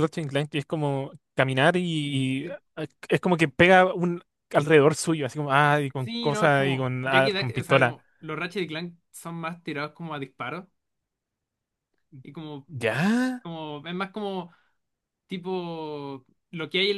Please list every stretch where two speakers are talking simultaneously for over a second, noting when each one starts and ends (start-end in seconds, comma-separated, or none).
6.0-8.0